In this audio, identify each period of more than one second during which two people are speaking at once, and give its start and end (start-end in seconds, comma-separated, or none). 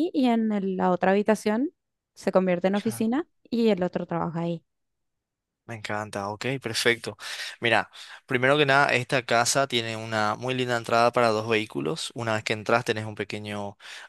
none